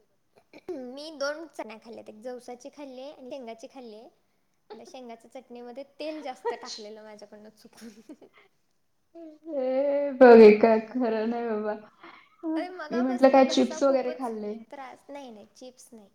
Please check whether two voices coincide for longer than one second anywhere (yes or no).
yes